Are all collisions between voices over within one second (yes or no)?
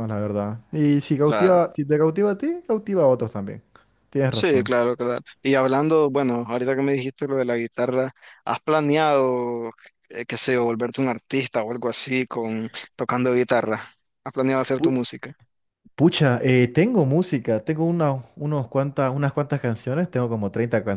yes